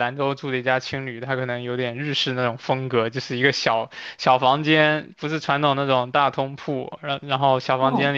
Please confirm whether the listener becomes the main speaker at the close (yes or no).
no